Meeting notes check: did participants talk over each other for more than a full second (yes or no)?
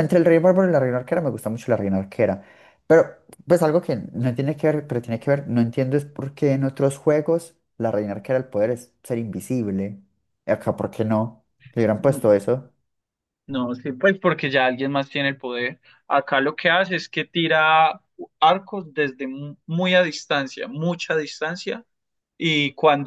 no